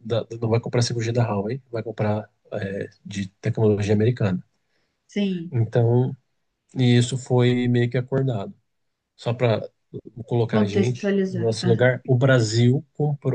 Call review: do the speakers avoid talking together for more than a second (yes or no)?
no